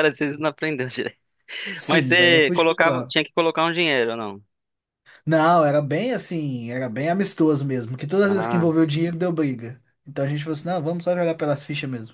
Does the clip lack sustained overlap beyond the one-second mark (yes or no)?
no